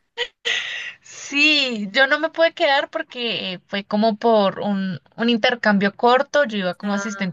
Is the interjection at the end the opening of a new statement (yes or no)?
no